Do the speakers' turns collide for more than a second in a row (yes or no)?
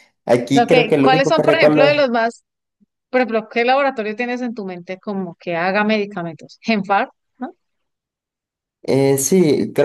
yes